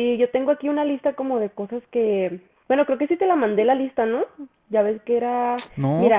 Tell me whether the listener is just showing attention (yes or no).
yes